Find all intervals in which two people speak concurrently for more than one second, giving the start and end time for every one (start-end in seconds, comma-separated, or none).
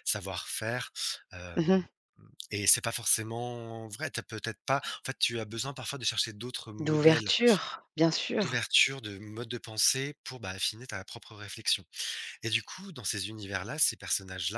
none